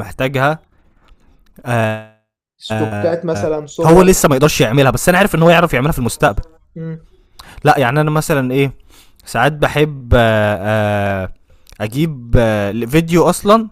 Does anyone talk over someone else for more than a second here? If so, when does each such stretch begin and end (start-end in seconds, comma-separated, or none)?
2.7-4.2